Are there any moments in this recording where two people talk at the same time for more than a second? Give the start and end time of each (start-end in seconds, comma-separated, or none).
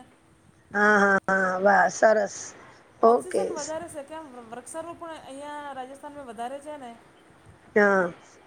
none